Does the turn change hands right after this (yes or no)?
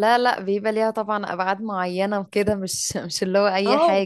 yes